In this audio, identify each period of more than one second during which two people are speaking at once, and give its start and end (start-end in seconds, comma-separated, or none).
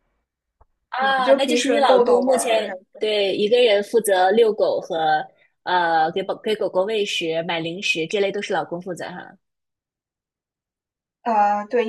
1.0-2.8